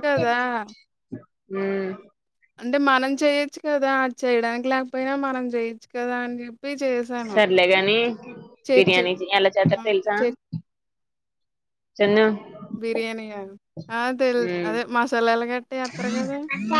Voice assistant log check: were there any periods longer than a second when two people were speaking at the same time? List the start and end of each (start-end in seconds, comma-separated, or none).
none